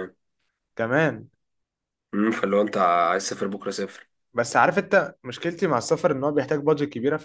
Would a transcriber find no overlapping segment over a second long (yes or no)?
yes